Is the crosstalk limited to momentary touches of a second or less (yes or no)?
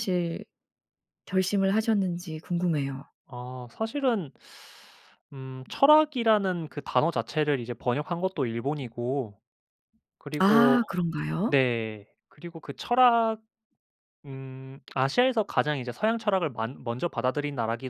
yes